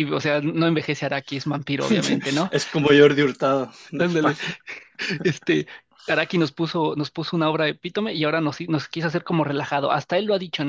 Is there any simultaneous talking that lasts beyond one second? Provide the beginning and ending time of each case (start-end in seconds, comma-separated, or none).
none